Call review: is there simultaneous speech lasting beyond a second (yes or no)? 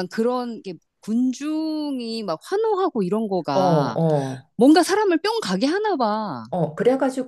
no